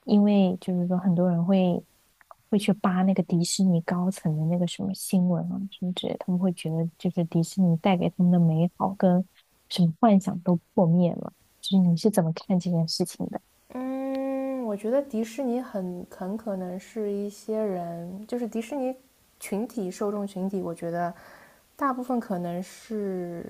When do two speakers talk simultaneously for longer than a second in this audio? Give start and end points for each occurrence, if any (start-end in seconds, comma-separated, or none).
none